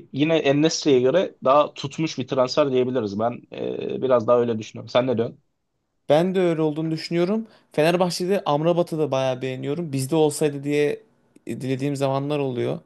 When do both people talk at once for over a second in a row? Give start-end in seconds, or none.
none